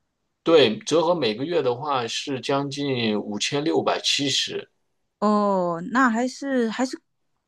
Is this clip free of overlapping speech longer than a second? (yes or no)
yes